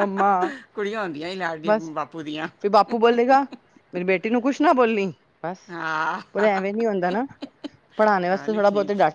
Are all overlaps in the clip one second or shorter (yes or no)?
yes